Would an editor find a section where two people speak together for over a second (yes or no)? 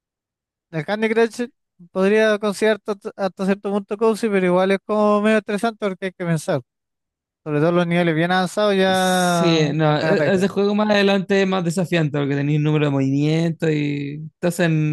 yes